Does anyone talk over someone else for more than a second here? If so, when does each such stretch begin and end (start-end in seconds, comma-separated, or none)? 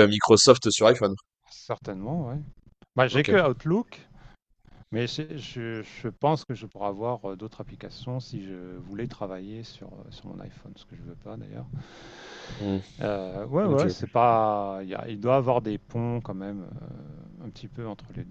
none